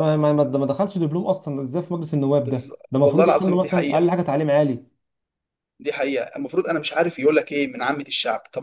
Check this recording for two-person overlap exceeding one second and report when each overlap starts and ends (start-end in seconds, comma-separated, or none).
2.5-4.1